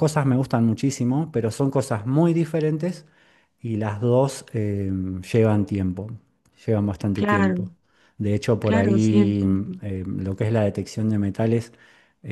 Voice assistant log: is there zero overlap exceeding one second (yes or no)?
no